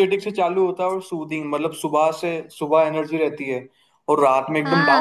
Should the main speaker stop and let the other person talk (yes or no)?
yes